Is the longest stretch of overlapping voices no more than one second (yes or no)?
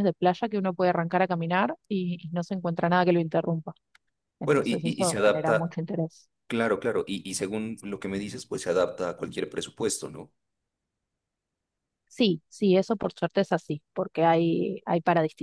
no